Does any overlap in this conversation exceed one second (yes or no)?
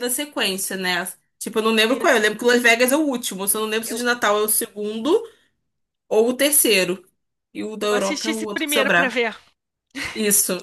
yes